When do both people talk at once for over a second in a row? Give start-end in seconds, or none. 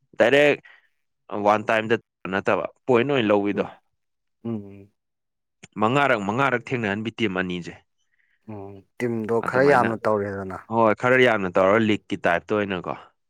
none